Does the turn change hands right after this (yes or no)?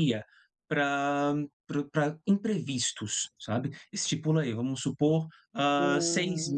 no